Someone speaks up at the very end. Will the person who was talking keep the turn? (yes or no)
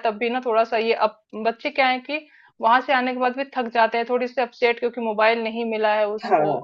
yes